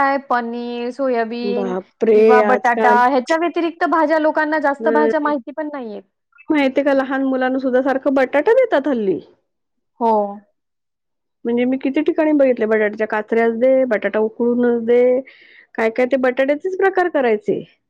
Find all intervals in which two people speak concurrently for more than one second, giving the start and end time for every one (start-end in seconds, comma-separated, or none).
1.6-3.0